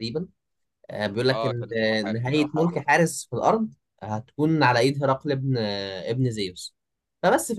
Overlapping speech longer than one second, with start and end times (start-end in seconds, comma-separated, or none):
1.3-2.8